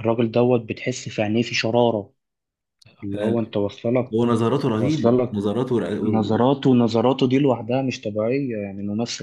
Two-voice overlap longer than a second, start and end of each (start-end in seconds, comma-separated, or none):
none